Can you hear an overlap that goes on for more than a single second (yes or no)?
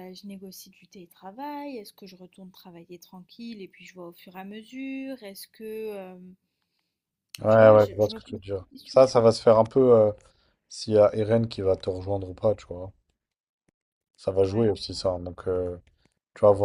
yes